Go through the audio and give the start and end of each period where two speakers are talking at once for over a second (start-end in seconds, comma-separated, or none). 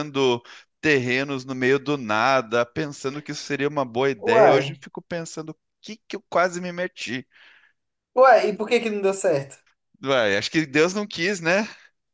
none